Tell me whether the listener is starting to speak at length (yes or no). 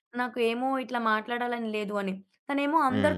no